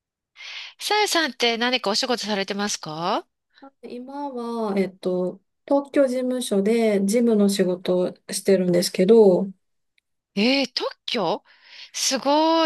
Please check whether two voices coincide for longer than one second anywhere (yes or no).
no